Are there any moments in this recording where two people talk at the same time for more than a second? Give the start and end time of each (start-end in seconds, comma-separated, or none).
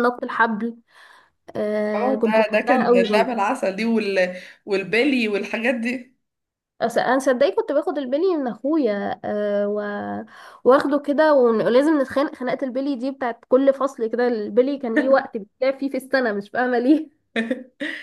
1.9-3.4